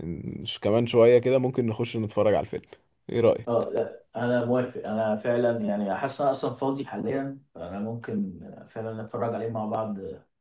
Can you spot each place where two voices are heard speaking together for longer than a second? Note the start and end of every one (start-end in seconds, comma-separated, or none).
none